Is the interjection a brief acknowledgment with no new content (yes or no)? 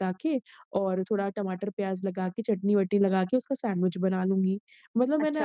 yes